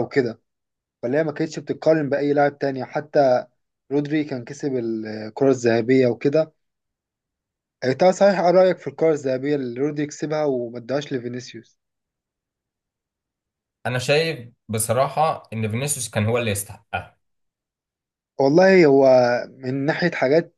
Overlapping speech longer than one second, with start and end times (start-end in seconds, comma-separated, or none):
none